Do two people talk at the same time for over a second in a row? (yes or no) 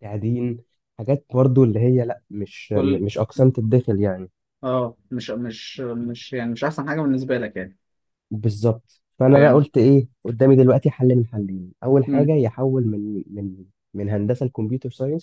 no